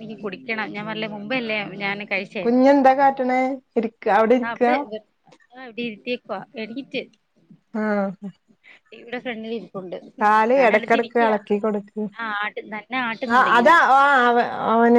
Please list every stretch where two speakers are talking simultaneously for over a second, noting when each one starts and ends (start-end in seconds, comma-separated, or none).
none